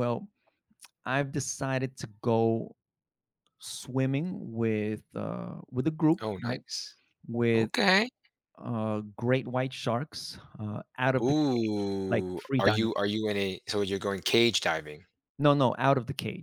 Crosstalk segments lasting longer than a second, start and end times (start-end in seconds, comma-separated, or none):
11.2-12.9